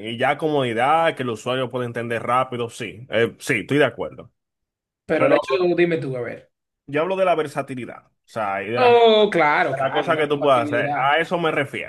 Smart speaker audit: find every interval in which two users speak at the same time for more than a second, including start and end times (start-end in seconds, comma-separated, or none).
9.8-11.2